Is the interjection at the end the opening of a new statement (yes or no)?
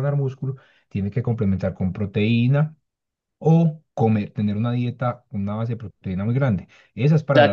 yes